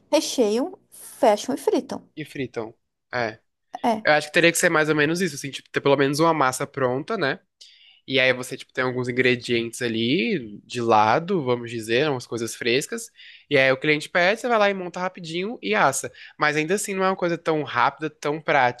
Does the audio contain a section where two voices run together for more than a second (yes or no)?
no